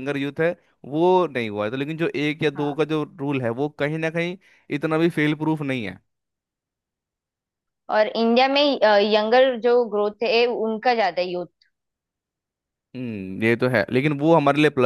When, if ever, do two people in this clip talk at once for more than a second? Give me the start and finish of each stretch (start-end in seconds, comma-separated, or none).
none